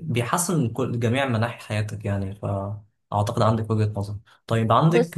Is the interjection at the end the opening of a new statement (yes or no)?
no